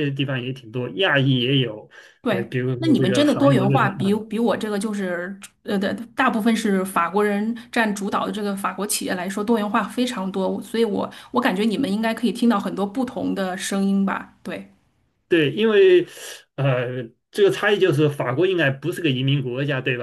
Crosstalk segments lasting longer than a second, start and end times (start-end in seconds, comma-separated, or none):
2.3-4.1